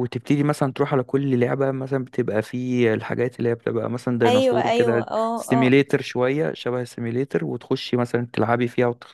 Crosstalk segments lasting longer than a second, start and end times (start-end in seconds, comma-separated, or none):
4.2-5.8